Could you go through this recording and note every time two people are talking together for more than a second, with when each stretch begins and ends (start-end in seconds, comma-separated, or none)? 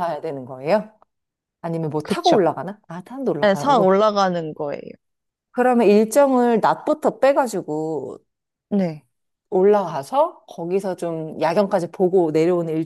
none